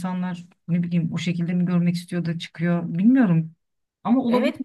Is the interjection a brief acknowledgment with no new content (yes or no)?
no